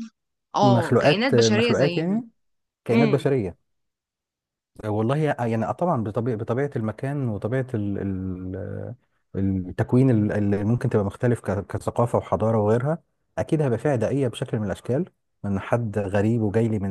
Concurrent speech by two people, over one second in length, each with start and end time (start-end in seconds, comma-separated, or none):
0.6-2.2